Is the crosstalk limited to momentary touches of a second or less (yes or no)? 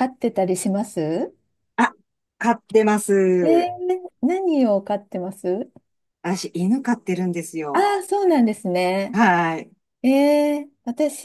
yes